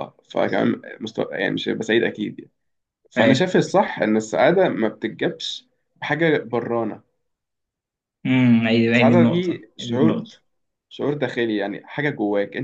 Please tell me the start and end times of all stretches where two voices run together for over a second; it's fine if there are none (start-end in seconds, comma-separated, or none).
8.9-10.3